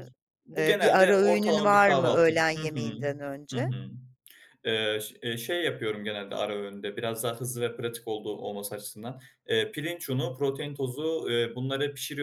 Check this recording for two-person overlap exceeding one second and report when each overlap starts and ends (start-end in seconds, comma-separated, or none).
0.6-2.8